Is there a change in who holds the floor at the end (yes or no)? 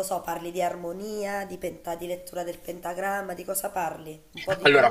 yes